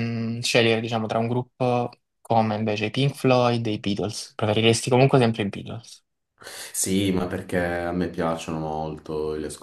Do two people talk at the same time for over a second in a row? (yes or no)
no